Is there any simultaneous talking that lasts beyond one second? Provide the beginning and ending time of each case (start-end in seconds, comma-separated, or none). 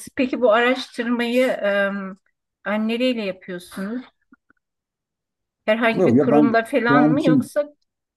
5.9-7.5